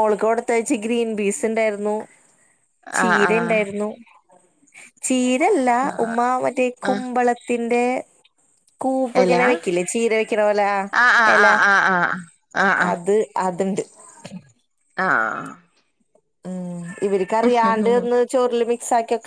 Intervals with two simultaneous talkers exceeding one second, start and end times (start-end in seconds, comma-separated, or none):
none